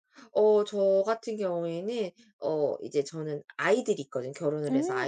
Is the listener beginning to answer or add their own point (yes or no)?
no